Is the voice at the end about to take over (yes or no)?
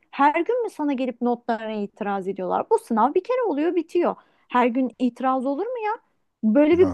no